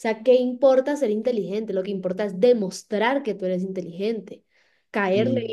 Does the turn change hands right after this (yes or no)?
no